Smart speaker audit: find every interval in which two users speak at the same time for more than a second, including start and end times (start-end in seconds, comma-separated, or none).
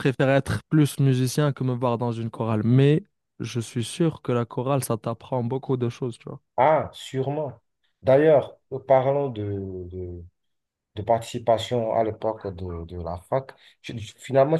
none